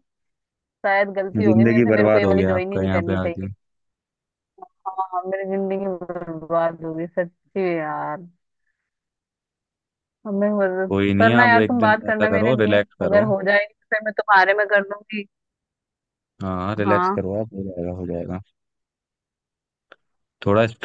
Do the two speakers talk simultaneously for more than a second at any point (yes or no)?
yes